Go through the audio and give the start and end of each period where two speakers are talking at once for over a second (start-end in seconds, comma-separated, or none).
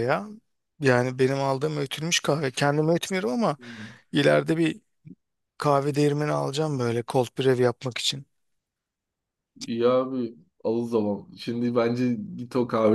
none